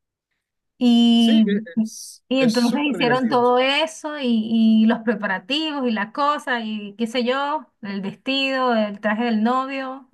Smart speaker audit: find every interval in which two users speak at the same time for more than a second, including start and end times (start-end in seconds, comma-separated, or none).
2.3-3.5